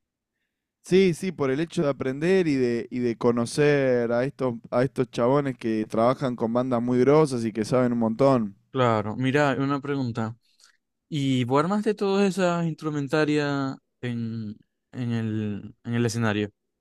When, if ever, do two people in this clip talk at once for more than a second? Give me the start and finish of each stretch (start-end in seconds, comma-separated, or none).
none